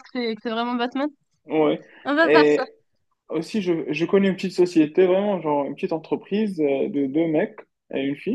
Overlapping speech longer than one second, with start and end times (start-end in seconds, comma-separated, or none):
none